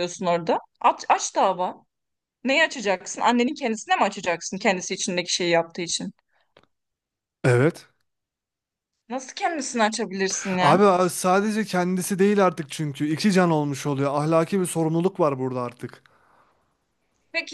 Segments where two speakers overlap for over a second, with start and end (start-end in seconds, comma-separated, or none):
none